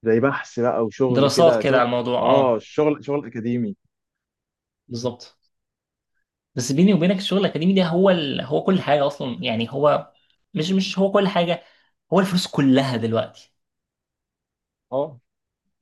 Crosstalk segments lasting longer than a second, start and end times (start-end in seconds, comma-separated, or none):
1.1-2.6